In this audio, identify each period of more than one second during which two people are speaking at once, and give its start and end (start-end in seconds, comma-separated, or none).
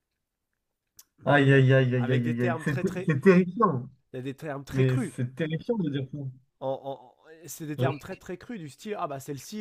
1.2-3.1